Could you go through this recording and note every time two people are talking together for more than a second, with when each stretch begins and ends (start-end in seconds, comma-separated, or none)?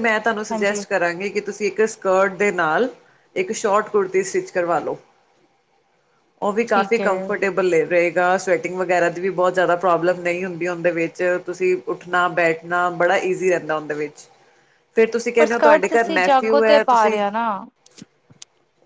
15.4-17.2